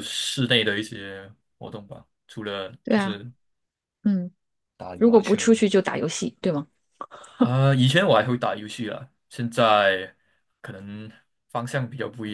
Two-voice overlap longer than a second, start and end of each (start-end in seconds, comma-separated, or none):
none